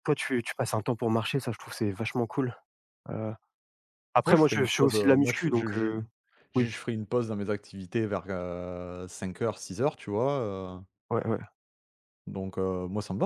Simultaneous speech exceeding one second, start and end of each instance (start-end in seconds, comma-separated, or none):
4.2-5.9